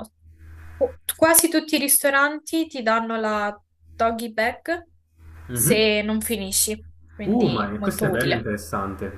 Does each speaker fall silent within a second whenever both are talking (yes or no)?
no